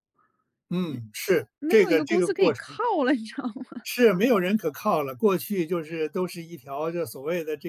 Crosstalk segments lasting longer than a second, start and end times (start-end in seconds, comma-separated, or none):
1.6-2.8